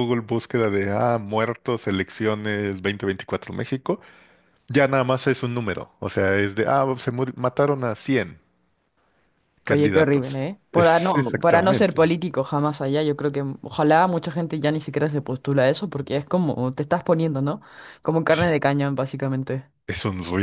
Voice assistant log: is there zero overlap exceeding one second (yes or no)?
no